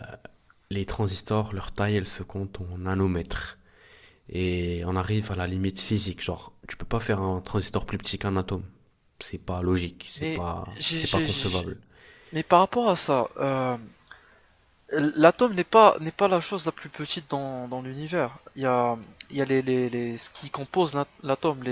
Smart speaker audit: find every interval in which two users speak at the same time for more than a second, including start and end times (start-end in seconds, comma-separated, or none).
10.2-11.7